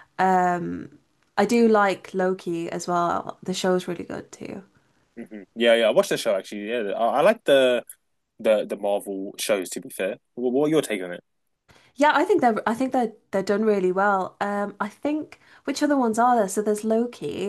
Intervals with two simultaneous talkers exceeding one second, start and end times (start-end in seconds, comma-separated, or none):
none